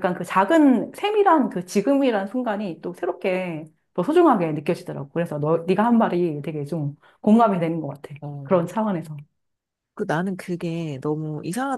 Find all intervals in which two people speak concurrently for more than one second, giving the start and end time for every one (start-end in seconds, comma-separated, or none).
none